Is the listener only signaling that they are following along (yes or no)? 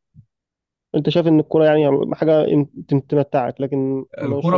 no